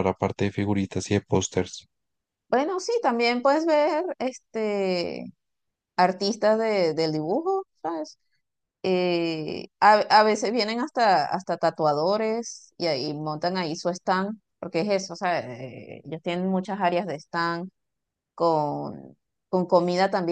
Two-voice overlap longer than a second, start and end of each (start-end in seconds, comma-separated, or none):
none